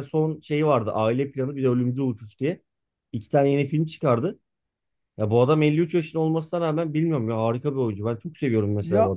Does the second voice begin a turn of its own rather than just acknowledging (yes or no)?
yes